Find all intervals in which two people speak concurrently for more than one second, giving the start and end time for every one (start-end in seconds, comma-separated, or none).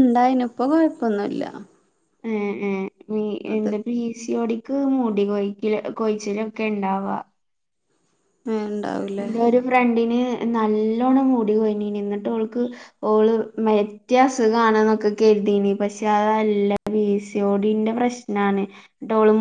none